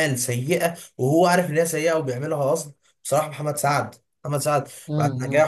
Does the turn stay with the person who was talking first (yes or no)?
yes